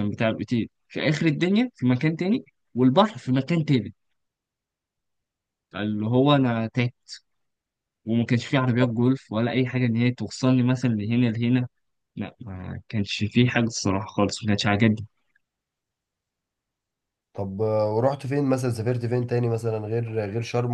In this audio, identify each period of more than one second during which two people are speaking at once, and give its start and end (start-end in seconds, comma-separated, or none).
none